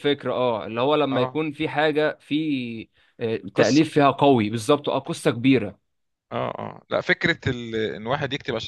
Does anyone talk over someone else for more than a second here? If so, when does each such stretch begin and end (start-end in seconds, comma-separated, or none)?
none